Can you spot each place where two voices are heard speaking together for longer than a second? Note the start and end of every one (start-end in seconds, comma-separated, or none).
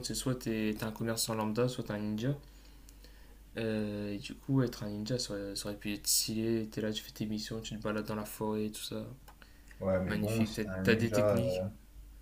10.1-11.7